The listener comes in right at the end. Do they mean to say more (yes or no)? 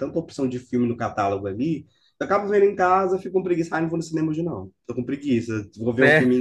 no